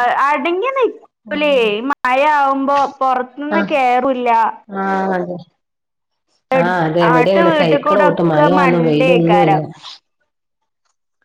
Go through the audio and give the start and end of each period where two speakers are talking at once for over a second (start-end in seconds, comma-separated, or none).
6.6-9.6